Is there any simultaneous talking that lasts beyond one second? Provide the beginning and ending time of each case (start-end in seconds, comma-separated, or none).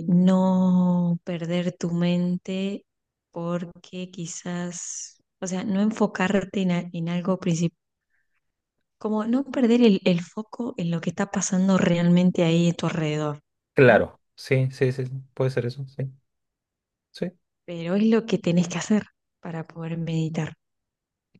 none